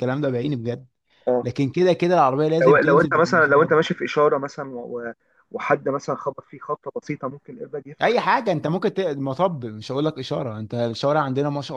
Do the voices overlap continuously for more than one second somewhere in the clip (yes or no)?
yes